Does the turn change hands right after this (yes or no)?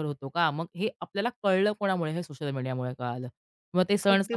no